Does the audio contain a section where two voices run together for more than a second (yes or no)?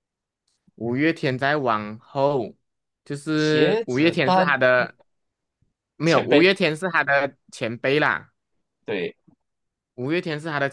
yes